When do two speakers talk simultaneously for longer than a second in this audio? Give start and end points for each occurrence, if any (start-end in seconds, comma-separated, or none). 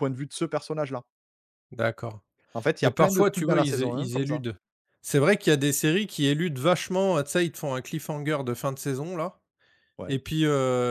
2.8-4.4